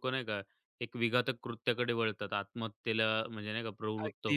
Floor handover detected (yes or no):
yes